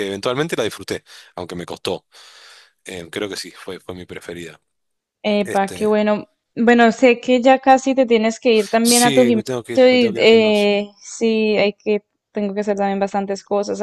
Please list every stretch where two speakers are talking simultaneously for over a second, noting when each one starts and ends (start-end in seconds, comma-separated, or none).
8.8-10.7